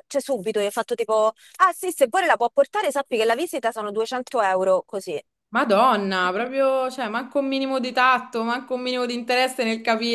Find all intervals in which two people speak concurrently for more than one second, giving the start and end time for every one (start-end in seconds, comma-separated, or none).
none